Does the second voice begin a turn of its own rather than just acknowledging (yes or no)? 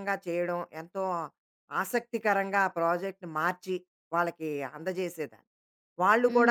yes